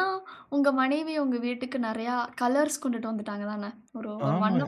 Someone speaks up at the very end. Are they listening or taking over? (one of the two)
taking over